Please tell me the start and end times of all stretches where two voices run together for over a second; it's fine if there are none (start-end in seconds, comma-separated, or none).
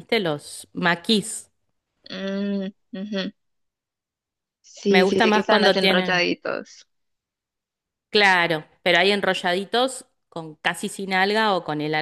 4.9-6.3